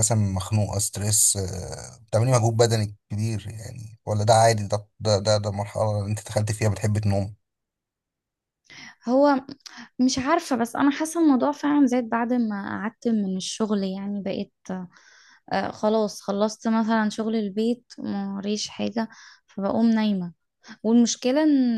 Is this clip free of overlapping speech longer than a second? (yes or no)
yes